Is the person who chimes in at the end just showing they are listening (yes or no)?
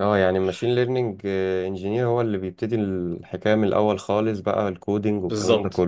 no